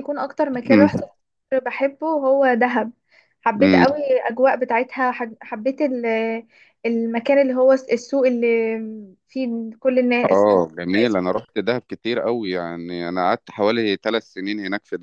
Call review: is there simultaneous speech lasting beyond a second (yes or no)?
no